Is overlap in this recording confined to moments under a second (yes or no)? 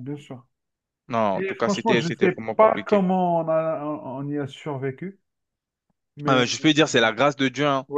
no